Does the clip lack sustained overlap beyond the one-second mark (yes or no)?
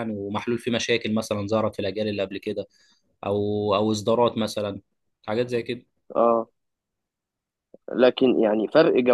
yes